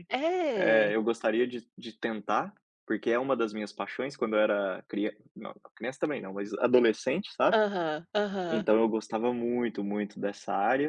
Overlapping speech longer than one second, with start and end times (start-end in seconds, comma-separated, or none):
none